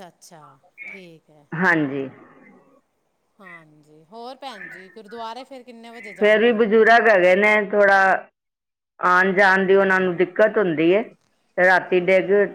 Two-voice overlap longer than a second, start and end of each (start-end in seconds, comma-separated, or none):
none